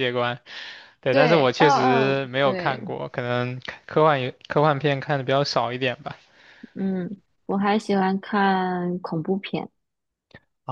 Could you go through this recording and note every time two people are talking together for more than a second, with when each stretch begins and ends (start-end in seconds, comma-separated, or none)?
1.1-2.8